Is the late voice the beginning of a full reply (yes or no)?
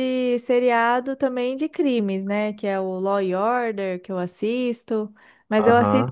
no